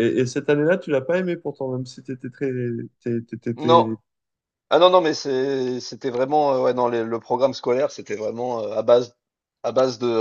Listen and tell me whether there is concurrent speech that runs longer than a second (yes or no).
no